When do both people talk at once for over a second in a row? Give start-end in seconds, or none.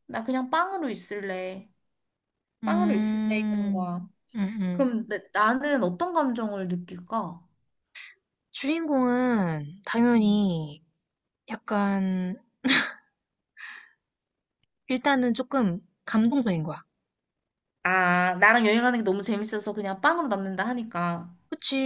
2.6-3.9